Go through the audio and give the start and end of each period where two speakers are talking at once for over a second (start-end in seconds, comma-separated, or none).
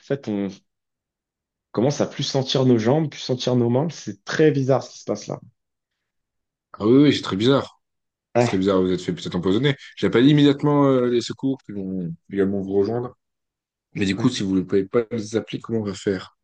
none